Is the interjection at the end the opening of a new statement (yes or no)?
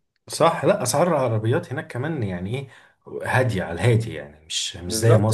yes